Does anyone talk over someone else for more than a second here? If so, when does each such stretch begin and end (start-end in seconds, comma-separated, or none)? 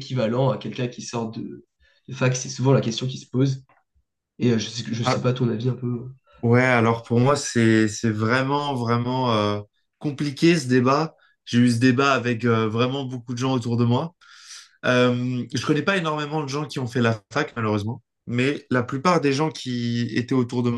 none